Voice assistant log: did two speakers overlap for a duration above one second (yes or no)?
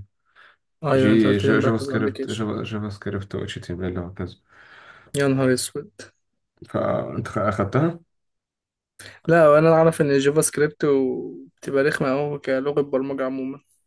yes